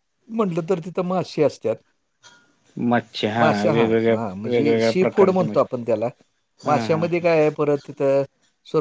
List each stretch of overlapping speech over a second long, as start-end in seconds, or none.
3.6-5.8